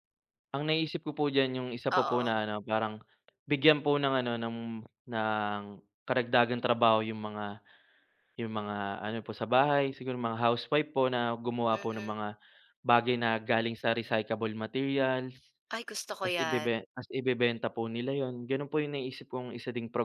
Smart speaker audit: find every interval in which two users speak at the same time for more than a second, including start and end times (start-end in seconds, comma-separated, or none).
none